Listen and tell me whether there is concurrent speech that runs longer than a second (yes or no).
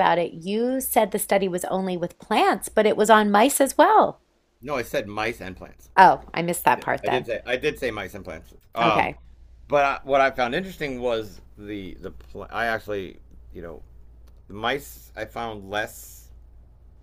no